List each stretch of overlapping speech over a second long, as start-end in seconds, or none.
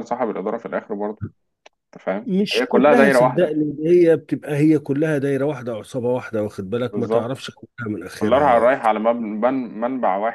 2.2-3.5